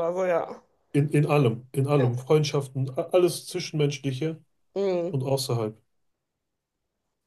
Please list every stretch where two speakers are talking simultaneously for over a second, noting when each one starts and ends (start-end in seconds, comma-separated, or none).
none